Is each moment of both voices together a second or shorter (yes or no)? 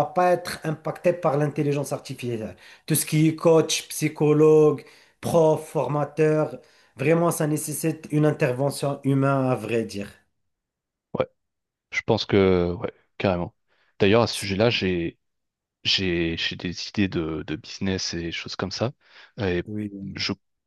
yes